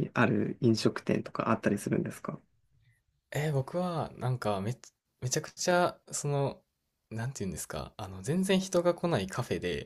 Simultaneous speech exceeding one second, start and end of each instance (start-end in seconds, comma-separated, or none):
none